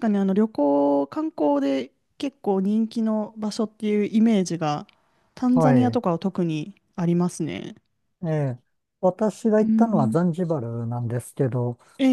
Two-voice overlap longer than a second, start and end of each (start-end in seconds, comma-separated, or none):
none